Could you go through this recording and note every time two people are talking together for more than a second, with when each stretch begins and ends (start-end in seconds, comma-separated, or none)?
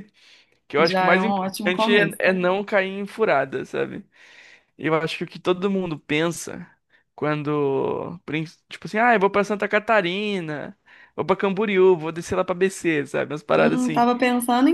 0.8-2.2